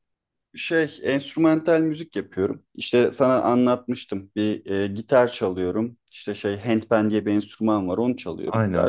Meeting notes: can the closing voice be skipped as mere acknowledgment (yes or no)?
yes